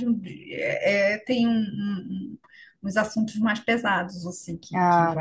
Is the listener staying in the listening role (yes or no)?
yes